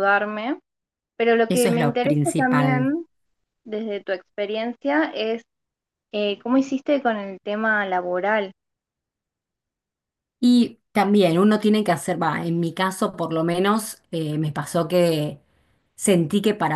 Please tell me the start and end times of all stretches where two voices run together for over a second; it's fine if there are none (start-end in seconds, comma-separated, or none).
1.5-3.0